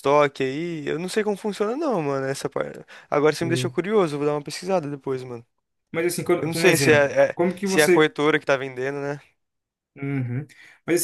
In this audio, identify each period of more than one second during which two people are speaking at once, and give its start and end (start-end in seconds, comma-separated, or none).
6.4-8.0